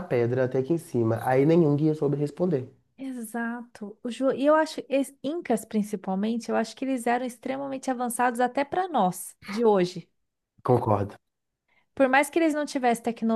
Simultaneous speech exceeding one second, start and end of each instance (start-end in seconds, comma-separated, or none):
none